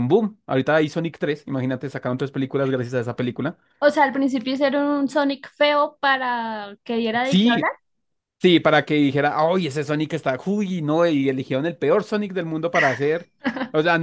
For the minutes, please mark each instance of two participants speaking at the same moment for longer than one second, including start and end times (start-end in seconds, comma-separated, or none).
none